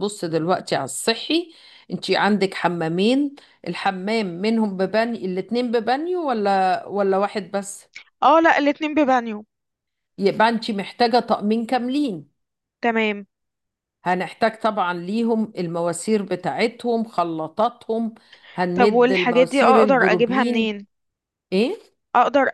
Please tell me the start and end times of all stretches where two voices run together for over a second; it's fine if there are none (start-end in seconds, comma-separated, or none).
18.7-20.7